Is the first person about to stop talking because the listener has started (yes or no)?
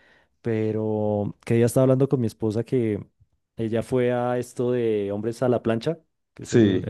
no